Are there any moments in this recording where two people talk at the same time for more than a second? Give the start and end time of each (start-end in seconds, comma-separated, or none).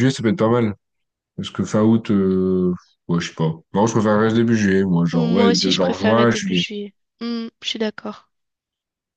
5.1-6.7